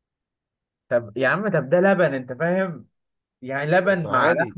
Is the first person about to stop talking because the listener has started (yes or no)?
no